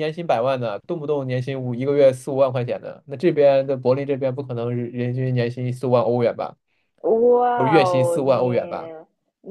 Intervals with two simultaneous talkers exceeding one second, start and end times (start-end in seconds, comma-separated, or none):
7.5-8.9